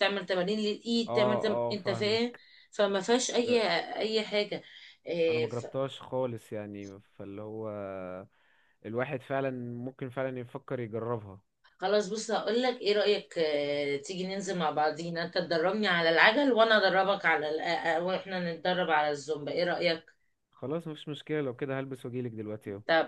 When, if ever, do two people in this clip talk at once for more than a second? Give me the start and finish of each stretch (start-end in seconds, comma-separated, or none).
1.1-2.4